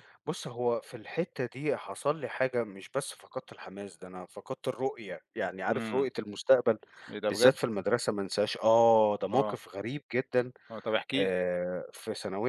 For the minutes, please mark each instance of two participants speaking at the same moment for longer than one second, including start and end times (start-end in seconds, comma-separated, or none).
none